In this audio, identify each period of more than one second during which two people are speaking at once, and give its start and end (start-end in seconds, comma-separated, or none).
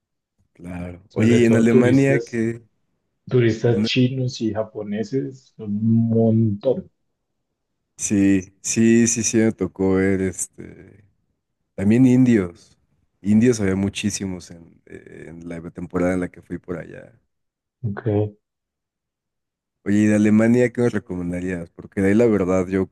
1.1-2.4